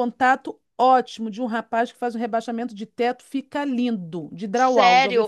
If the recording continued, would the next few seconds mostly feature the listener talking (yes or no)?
yes